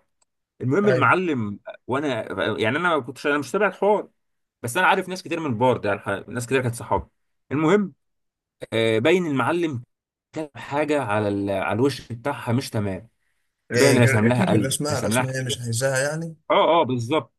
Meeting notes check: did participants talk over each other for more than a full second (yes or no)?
yes